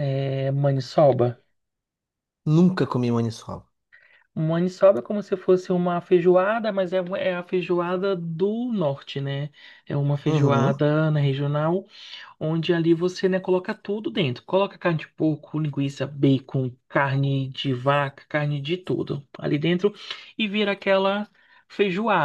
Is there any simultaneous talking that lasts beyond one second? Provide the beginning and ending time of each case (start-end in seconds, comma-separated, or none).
none